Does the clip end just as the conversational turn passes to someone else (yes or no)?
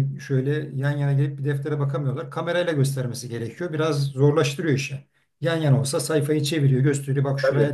no